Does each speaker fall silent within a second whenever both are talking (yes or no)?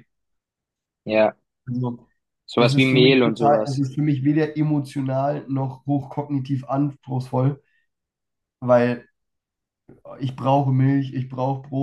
no